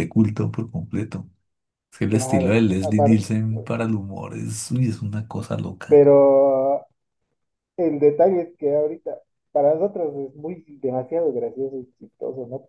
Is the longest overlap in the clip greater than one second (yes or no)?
yes